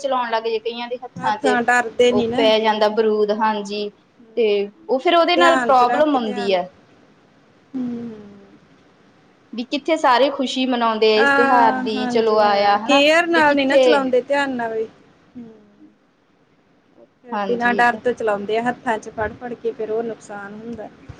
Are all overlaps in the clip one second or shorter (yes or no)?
no